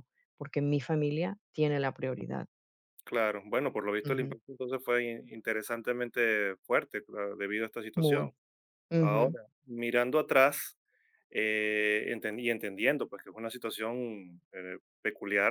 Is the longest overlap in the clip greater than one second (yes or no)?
no